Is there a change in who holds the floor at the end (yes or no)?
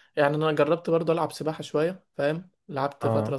no